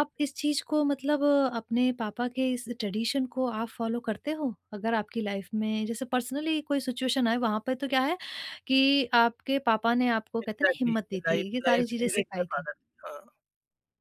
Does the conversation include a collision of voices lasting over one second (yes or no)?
yes